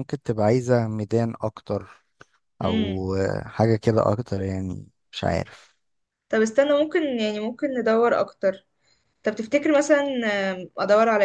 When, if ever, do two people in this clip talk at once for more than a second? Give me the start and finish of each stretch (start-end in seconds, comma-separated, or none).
none